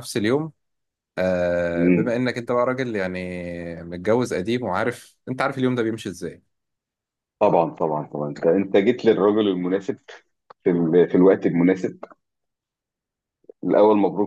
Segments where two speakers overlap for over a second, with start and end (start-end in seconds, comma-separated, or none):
none